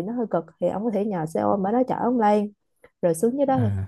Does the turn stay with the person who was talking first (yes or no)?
yes